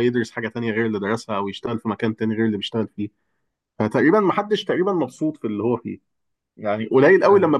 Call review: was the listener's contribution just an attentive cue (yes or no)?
yes